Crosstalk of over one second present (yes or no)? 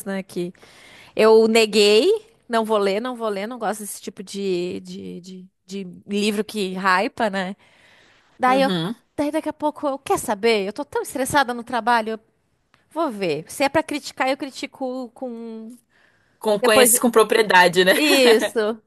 no